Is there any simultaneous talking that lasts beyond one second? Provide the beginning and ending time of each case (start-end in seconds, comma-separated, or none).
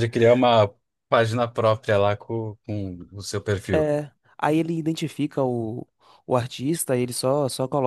none